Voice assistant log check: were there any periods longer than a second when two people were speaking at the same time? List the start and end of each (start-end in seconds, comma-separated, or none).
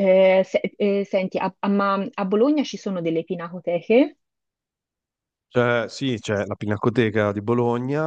none